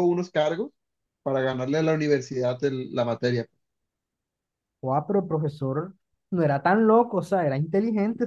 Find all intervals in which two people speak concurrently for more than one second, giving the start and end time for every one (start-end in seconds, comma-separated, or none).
none